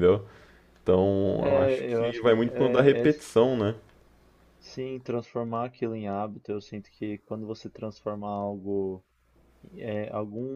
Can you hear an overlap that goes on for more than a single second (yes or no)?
yes